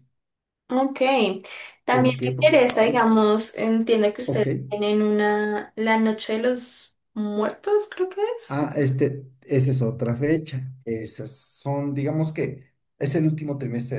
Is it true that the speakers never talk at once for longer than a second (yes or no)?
no